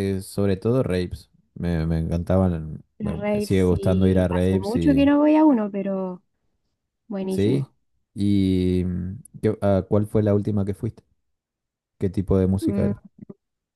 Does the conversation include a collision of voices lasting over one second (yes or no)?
yes